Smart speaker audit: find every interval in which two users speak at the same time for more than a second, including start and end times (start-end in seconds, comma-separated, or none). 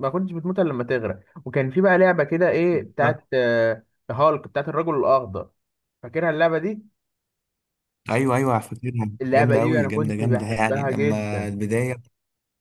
9.2-11.5